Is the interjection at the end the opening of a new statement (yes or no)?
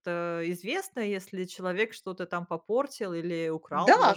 yes